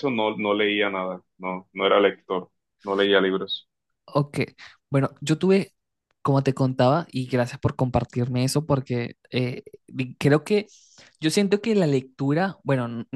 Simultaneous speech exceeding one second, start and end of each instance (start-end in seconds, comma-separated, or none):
none